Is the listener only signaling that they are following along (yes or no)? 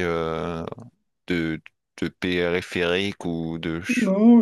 no